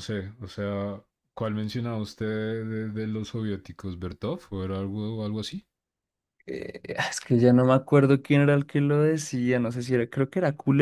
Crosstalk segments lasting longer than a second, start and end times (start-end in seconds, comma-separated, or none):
none